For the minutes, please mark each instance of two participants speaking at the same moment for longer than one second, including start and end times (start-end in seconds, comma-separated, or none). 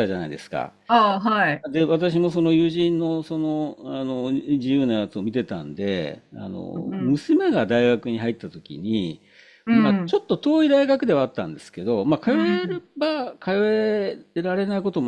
none